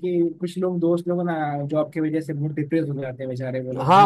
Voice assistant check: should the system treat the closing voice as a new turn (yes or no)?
yes